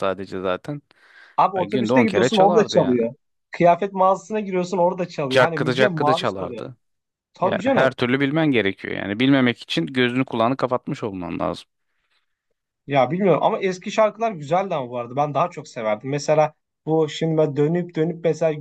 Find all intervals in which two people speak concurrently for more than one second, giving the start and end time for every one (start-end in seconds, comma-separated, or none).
1.6-3.0, 5.3-6.7